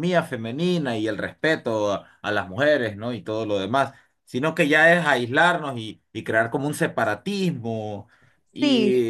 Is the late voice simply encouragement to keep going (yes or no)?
yes